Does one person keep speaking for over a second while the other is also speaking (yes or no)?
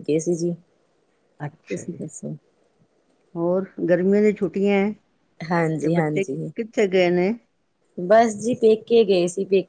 no